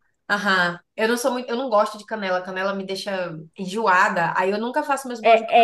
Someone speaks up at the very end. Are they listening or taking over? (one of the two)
taking over